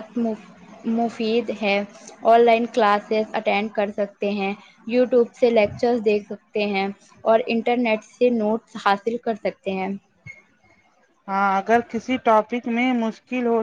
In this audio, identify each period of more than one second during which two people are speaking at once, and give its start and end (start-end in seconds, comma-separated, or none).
none